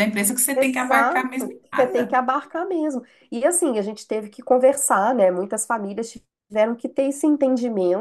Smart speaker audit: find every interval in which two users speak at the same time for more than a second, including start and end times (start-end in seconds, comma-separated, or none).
0.5-2.1